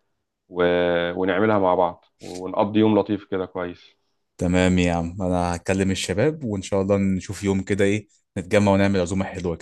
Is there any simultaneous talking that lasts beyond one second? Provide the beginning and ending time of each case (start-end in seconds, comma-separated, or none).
none